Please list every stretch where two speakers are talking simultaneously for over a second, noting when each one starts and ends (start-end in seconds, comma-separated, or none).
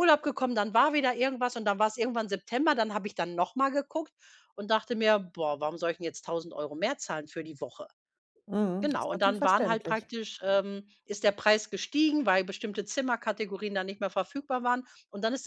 8.8-10.1